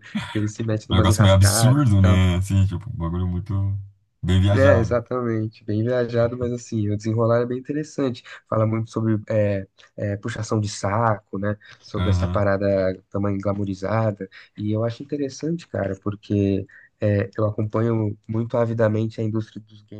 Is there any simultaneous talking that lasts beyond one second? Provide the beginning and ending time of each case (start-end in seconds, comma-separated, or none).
0.9-2.2